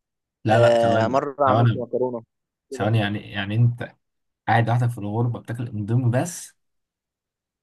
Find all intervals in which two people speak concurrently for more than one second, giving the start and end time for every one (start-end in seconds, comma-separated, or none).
0.5-1.9